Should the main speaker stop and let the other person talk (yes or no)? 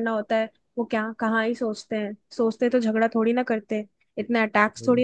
no